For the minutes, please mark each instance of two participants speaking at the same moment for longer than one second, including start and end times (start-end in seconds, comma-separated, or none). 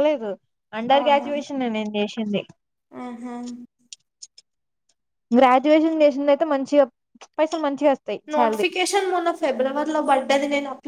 none